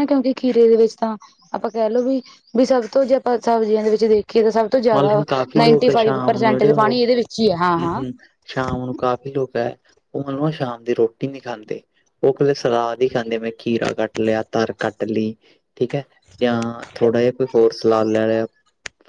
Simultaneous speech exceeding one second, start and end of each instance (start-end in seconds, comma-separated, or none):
4.9-7.0